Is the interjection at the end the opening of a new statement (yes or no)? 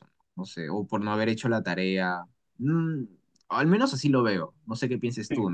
no